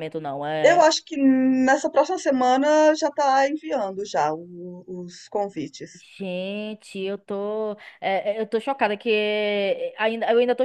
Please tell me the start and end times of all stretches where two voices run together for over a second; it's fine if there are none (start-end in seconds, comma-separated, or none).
none